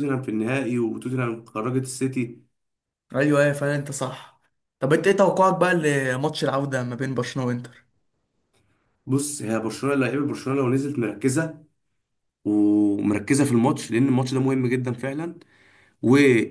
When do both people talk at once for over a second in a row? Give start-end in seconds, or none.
none